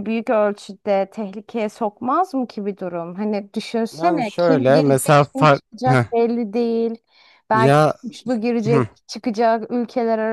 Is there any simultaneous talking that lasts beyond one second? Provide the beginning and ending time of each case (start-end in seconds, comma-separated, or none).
3.9-6.0